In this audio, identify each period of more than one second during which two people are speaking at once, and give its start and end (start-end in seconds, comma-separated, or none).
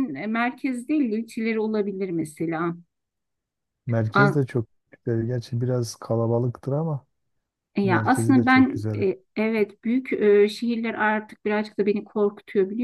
7.8-9.1